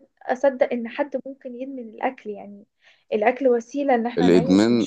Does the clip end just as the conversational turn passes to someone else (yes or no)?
yes